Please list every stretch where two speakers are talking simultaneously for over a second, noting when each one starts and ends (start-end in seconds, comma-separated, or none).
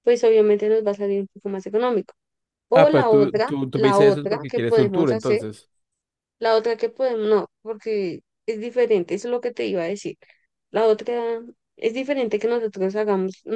2.7-5.5